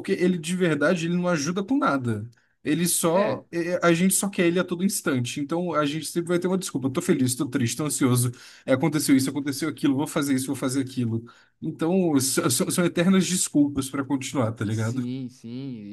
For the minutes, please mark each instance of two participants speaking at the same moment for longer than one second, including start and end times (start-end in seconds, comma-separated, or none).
none